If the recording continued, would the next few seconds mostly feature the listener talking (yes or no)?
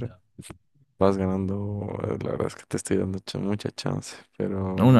yes